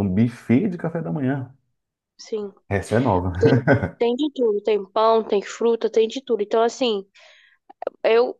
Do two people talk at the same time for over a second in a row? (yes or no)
no